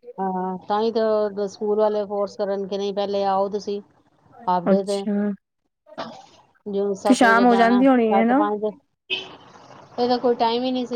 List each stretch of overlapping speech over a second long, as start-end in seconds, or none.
7.1-8.4